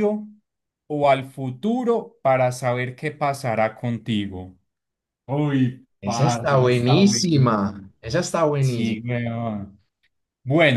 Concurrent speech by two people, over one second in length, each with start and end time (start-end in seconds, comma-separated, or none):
6.0-7.9